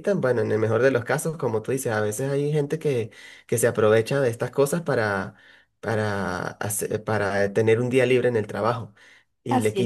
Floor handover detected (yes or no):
no